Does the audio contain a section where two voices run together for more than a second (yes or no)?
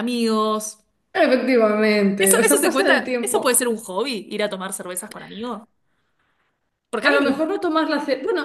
yes